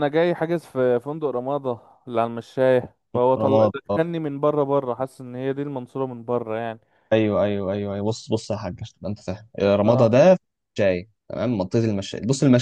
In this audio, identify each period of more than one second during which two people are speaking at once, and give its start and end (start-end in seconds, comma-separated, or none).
none